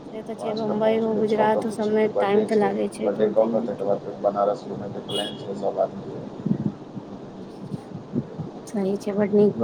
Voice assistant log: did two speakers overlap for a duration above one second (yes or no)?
yes